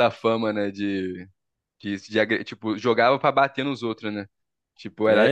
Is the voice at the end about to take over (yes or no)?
yes